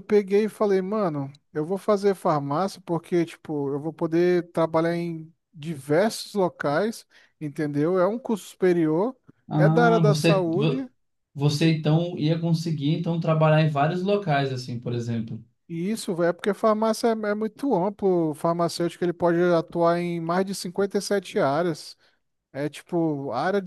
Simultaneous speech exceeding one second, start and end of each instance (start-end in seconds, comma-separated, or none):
9.6-10.8